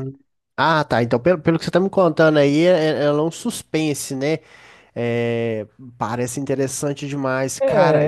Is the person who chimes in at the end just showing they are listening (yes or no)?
no